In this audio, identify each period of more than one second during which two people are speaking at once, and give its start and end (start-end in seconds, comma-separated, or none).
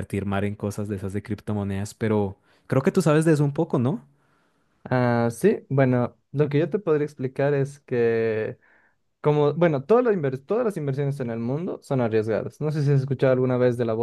none